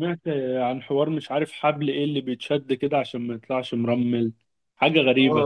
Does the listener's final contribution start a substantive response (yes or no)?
yes